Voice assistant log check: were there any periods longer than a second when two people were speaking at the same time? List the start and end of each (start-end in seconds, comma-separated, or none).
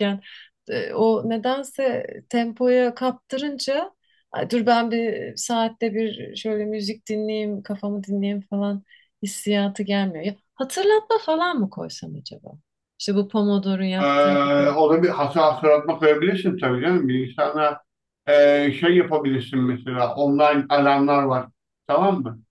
none